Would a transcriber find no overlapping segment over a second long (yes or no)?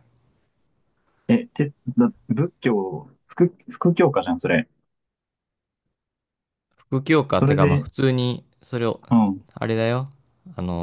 yes